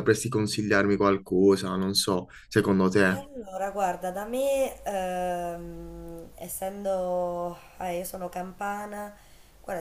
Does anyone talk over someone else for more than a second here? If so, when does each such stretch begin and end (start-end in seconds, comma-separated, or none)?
none